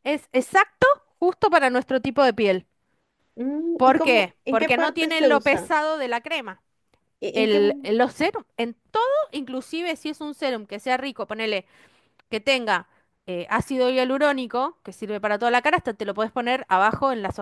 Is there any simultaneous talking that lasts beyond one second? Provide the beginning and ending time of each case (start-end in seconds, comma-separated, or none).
3.8-5.7